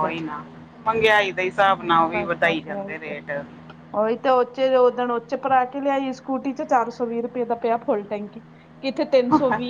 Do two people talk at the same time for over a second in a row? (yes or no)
yes